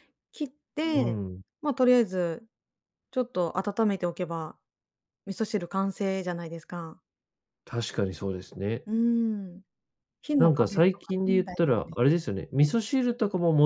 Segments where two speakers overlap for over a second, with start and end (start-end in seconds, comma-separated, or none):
10.4-12.0